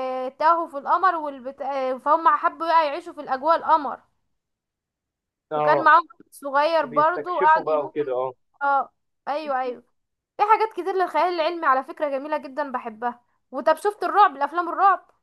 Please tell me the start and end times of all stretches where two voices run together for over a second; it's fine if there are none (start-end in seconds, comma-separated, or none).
6.9-8.2